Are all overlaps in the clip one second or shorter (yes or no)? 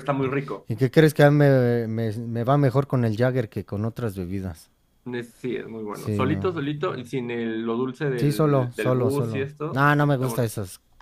no